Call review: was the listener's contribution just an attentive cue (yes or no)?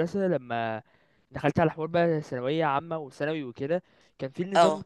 yes